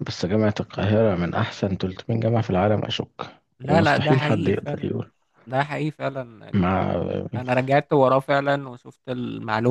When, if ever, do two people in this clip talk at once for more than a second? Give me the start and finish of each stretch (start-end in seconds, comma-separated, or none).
3.6-4.9